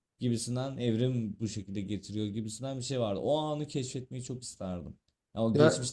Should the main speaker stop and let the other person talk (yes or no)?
no